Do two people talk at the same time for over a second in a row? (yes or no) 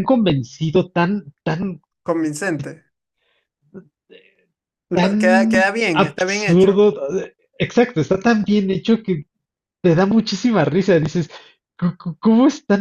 yes